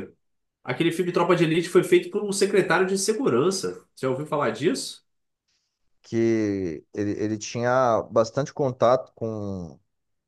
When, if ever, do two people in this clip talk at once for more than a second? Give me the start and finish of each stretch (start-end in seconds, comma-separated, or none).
none